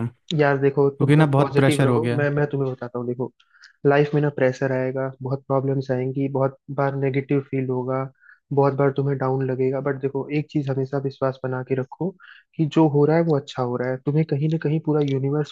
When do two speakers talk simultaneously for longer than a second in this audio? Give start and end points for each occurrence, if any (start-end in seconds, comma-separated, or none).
0.8-2.3